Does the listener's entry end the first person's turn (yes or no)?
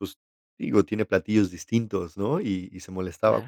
no